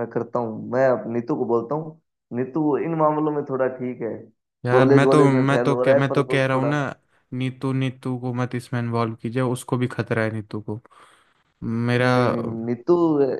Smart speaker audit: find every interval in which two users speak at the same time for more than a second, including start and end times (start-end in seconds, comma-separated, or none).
4.7-6.7